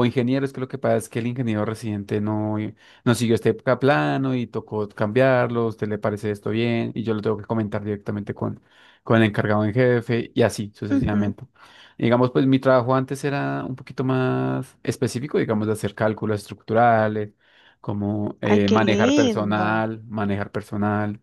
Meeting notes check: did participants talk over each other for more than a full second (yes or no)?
yes